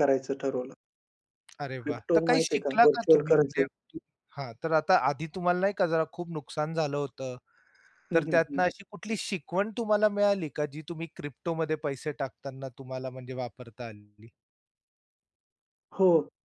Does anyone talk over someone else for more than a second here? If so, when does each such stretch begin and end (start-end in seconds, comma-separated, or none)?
1.8-3.6